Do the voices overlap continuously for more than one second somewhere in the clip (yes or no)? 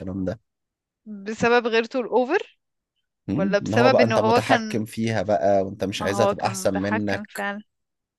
yes